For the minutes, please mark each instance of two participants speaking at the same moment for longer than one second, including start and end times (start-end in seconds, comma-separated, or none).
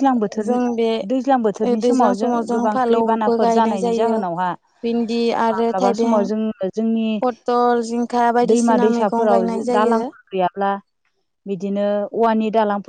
2.5-4.2, 8.5-10.1